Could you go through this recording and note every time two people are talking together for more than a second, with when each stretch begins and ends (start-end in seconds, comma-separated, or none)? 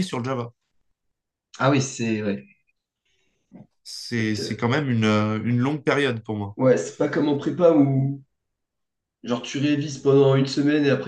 none